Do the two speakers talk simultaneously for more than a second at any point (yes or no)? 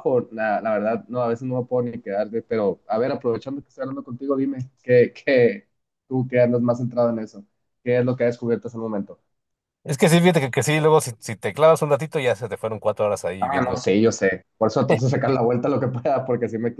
no